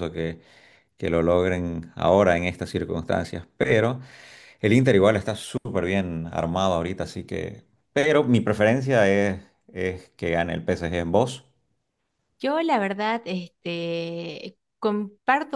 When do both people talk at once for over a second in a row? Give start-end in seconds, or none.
none